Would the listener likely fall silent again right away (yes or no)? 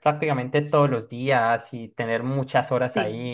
yes